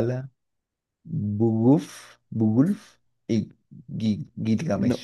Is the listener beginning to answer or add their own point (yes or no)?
yes